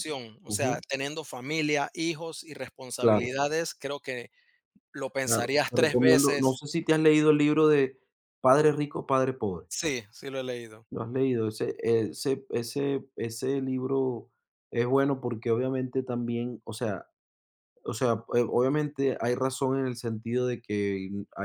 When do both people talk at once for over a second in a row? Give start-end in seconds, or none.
5.2-6.6